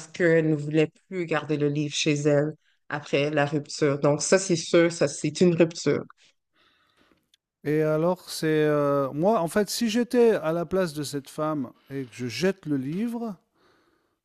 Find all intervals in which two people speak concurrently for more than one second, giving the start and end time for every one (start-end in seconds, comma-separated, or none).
none